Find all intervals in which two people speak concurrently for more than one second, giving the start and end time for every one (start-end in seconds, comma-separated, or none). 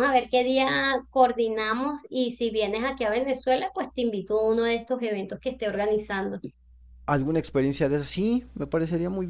none